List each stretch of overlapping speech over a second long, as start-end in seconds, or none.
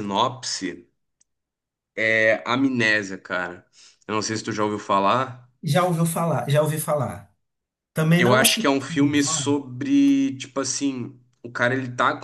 8.2-9.6